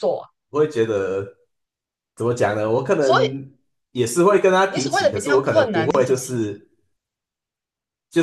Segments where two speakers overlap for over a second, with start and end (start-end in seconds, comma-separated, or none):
4.7-6.6